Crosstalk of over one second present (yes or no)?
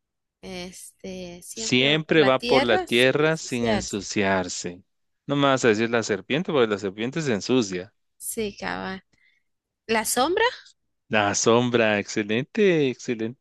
yes